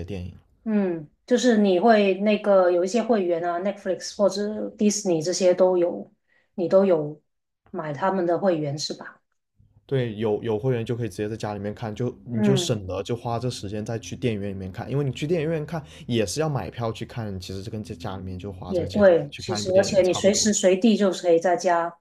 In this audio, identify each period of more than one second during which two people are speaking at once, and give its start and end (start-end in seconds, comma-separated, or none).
18.7-20.5